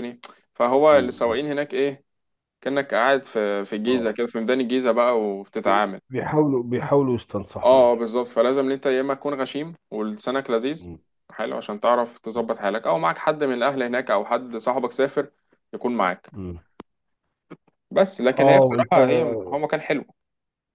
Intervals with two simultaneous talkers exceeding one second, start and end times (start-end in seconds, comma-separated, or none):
none